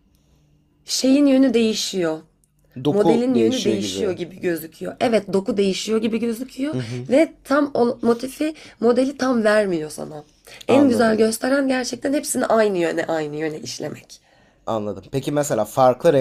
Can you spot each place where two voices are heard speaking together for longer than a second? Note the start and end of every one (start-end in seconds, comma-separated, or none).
2.9-4.2